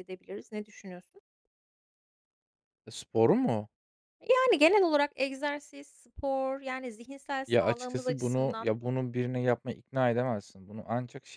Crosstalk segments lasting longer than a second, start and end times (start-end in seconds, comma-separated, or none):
7.5-8.7